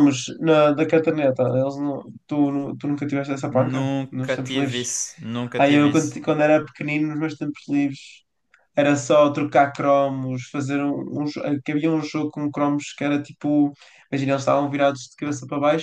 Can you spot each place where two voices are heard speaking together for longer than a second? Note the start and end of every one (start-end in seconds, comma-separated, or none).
3.5-4.9